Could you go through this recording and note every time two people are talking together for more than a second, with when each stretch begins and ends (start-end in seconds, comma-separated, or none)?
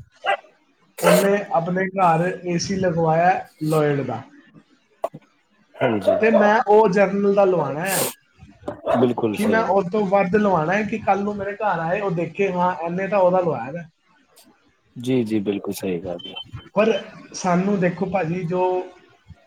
none